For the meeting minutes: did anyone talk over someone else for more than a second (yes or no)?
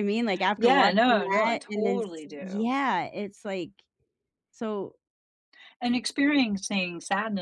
yes